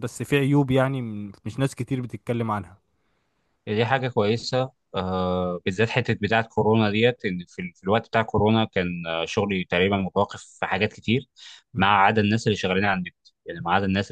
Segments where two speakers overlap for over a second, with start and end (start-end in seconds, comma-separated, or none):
none